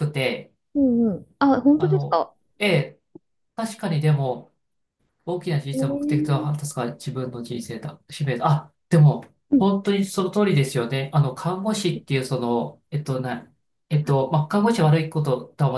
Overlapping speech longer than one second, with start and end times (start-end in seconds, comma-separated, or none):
none